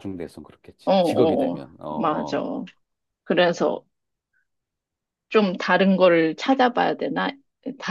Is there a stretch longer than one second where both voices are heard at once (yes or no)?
yes